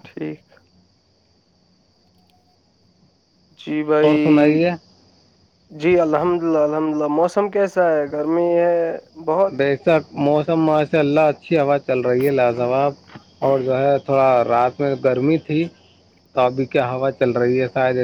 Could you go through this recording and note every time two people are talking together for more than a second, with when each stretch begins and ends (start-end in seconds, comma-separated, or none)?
none